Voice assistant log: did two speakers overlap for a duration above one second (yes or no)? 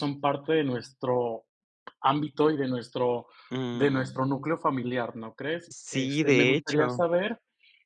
yes